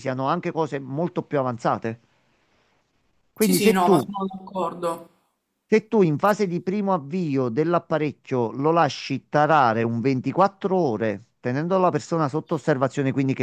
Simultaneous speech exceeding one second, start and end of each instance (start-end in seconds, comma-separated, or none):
none